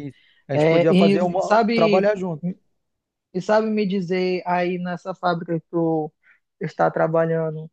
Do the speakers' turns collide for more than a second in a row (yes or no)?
yes